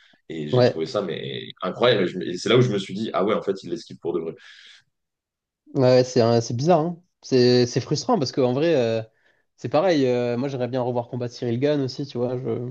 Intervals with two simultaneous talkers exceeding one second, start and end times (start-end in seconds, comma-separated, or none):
none